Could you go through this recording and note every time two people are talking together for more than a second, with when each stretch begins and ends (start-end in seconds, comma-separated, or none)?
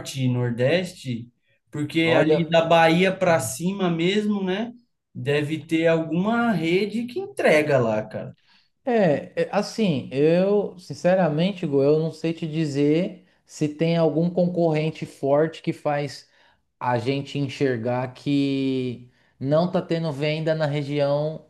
none